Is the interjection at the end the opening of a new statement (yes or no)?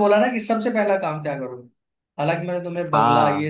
no